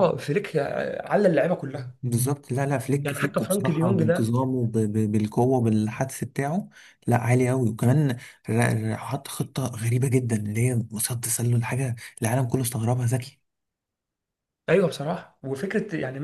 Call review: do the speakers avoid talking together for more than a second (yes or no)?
no